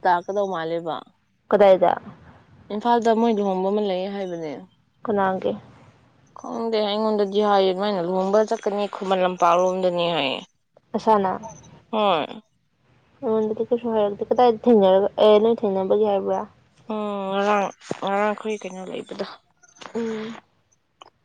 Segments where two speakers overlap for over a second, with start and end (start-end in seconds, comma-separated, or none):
none